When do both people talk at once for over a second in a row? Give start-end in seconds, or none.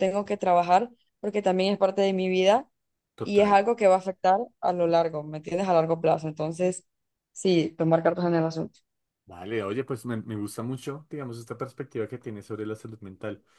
none